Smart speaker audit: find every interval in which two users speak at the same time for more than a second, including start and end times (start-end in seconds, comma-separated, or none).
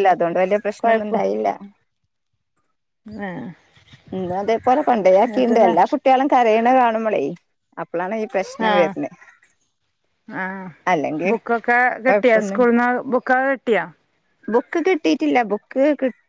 none